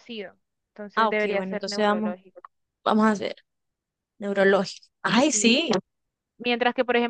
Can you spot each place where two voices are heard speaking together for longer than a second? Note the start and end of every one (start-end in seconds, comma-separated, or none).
0.9-2.2